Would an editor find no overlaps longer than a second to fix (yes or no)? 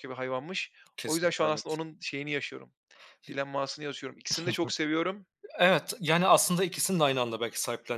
yes